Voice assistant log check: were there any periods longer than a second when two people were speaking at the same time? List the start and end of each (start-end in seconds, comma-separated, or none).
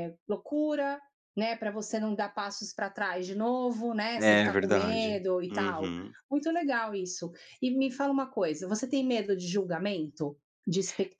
4.2-5.9